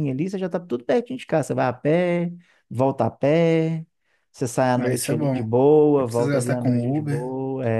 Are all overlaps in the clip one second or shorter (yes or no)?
no